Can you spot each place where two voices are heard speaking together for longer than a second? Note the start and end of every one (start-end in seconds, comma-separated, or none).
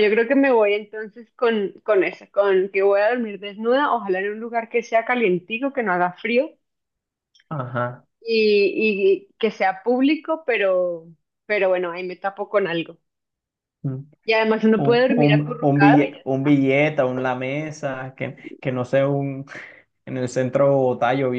14.8-16.6